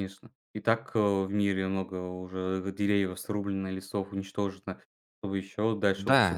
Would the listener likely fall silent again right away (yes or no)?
no